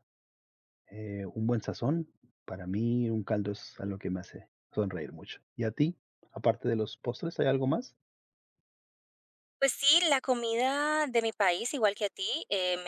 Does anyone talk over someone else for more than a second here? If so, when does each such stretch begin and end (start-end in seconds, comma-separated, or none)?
none